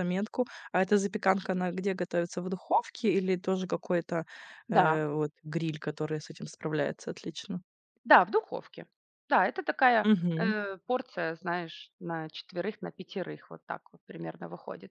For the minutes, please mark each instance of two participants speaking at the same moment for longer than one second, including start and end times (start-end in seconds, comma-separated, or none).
none